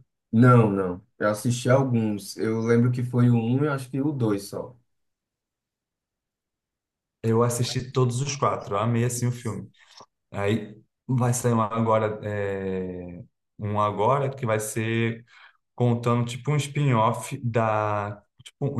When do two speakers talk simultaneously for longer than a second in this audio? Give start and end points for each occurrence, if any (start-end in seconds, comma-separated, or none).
none